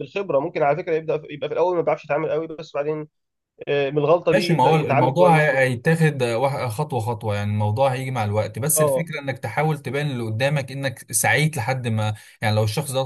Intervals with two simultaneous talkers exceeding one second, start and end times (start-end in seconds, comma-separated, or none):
4.3-5.7